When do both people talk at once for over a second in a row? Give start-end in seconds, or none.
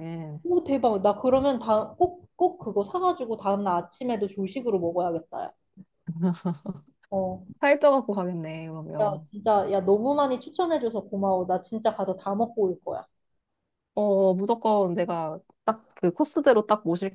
none